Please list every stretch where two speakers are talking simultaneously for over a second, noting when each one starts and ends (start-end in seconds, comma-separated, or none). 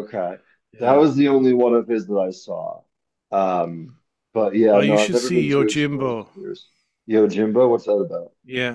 4.7-6.3